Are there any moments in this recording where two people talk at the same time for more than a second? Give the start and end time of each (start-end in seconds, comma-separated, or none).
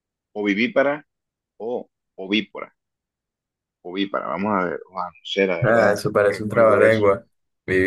5.6-7.0